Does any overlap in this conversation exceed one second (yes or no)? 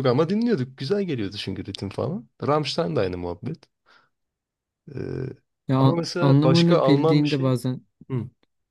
yes